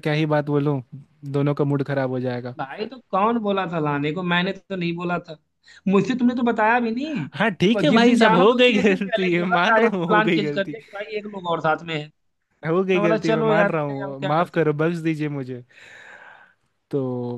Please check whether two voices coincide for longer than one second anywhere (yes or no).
yes